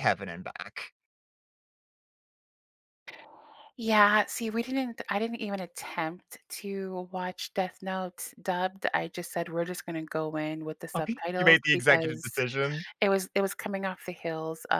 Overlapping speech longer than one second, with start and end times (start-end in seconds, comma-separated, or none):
10.9-12.3